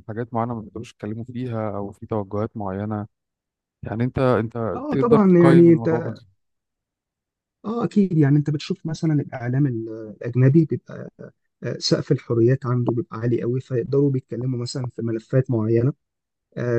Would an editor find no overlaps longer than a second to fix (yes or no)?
no